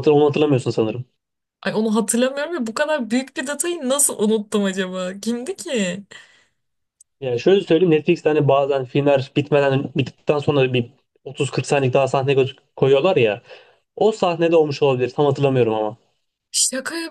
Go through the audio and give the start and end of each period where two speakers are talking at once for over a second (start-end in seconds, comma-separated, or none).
none